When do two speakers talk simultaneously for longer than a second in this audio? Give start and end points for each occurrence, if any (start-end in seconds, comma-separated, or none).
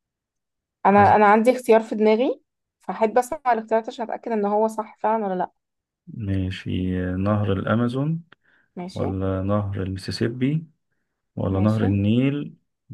none